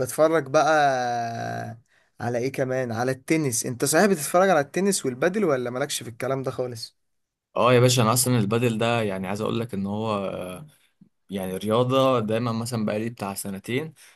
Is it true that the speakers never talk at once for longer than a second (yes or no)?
yes